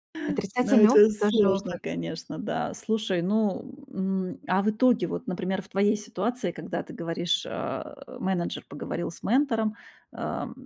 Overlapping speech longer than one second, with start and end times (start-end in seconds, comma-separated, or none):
0.6-1.8